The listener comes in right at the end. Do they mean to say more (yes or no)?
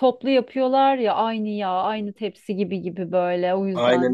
yes